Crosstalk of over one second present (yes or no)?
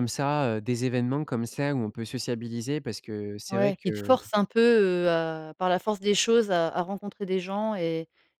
no